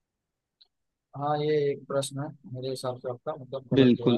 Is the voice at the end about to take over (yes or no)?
yes